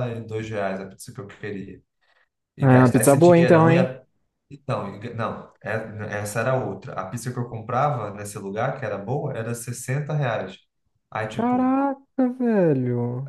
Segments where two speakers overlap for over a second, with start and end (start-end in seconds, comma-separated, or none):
2.6-3.9